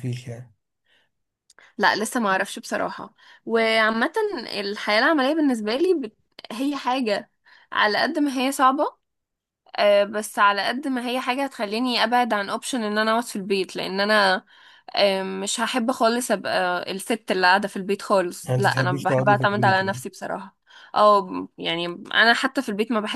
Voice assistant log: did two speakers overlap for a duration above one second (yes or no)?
yes